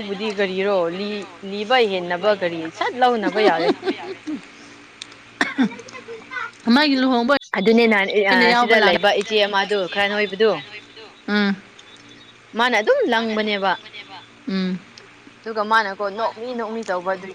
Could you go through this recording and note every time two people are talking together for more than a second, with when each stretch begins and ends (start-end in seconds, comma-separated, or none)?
8.2-10.5